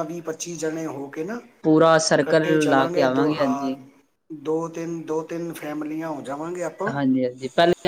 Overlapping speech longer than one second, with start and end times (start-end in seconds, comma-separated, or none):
2.1-3.7